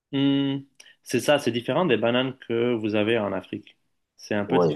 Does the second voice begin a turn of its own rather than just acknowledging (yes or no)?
no